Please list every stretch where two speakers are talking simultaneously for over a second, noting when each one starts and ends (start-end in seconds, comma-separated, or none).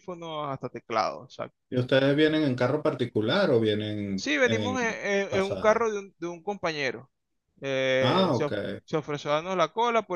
4.1-5.8